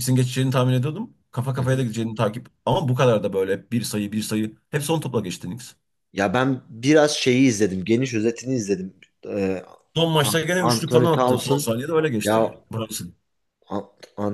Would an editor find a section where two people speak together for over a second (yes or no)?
yes